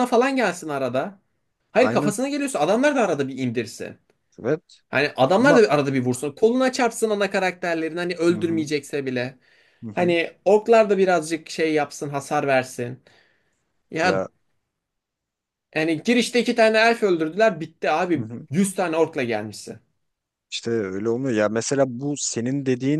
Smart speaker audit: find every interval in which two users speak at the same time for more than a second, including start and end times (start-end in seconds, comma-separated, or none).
none